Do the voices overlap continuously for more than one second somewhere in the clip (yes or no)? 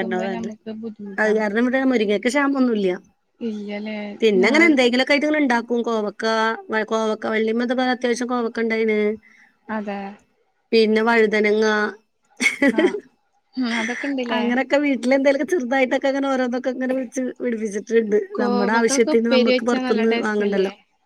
yes